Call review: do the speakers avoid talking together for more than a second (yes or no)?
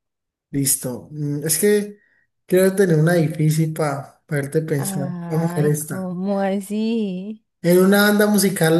no